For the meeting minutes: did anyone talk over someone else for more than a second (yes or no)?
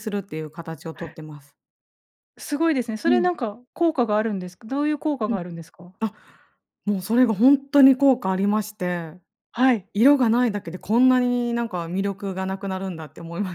no